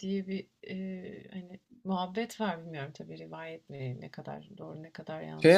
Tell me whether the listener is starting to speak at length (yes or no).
yes